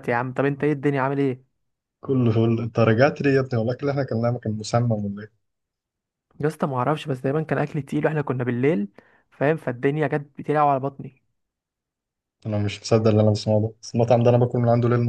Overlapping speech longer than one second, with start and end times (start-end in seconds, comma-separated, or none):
none